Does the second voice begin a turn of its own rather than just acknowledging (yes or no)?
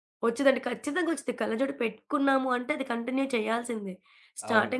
no